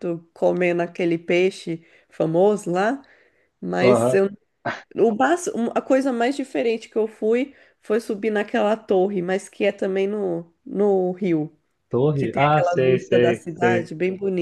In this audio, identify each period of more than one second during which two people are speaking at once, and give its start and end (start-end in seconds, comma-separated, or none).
12.2-13.9